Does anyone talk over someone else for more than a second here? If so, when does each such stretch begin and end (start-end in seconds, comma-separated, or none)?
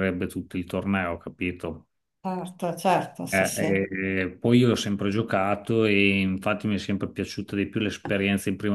none